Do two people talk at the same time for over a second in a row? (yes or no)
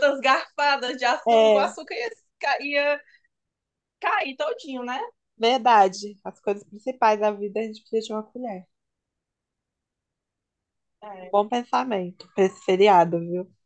no